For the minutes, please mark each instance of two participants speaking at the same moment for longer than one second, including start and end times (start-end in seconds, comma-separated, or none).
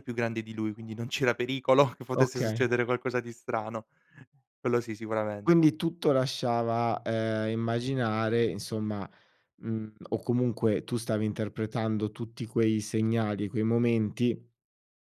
none